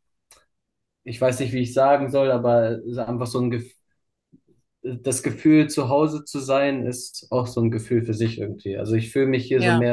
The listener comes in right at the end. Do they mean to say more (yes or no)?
no